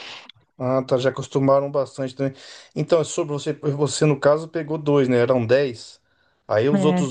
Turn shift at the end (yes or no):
no